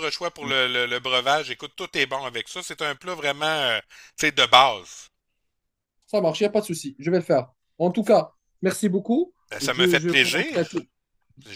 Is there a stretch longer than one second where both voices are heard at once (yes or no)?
yes